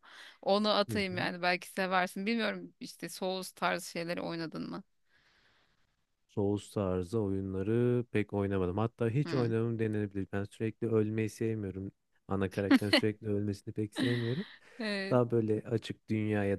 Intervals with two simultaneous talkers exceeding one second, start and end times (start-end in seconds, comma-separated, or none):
none